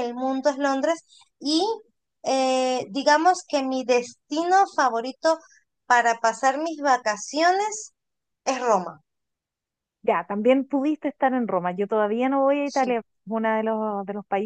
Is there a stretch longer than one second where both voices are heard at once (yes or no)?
no